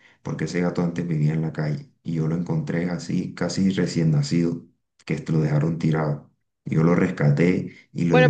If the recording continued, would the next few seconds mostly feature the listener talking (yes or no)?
yes